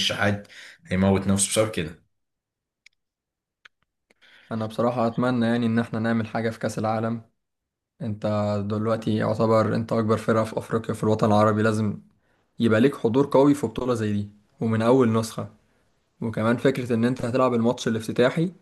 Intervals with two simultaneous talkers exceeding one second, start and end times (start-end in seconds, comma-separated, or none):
none